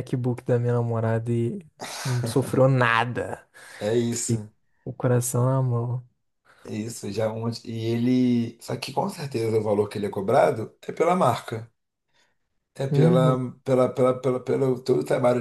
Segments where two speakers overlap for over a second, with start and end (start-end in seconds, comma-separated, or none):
none